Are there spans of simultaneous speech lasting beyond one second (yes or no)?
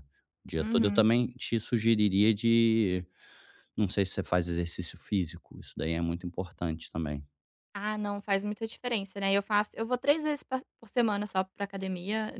no